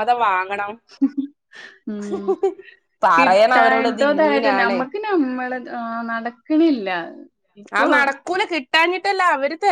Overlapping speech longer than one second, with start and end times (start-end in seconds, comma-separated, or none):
3.2-4.8